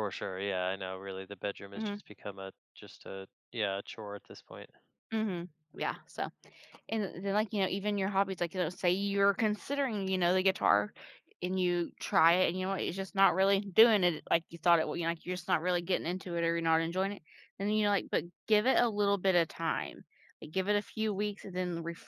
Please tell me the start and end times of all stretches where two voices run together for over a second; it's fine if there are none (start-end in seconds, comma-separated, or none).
none